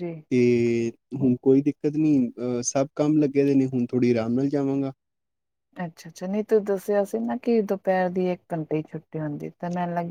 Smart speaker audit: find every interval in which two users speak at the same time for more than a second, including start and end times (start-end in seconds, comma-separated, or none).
none